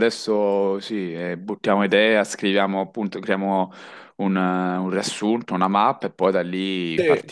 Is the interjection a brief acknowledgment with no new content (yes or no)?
no